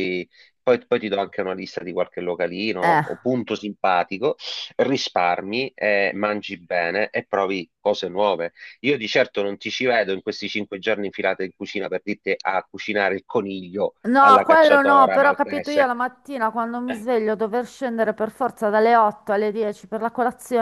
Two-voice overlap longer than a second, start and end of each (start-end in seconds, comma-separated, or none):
14.0-15.9